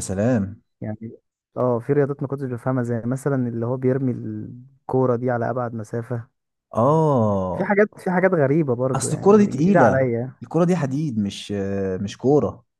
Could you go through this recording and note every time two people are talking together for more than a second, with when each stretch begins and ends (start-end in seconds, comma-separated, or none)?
8.9-10.3